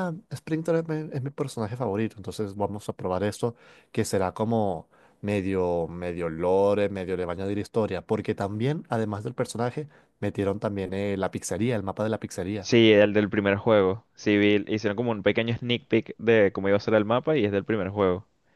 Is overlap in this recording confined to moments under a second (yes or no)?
yes